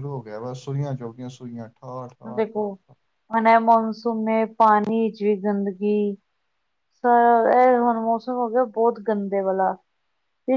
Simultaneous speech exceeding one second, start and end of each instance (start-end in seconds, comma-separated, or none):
none